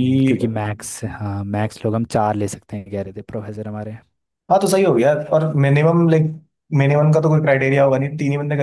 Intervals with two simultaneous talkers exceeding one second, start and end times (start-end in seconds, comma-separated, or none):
none